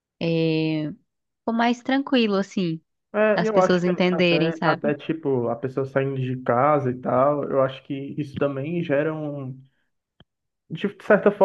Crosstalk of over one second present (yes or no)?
yes